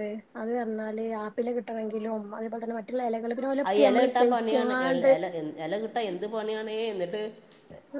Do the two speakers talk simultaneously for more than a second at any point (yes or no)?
no